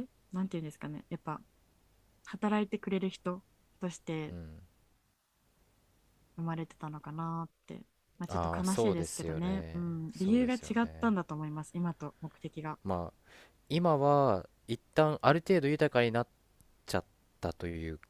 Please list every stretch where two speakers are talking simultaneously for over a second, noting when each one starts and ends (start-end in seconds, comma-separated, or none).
8.3-11.1